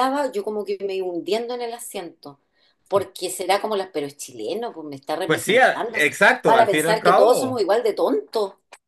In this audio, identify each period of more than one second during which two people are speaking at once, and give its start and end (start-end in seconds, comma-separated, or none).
5.2-7.6